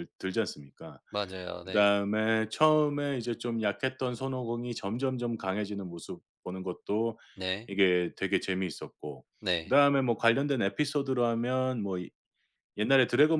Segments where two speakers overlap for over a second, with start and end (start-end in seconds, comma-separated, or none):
none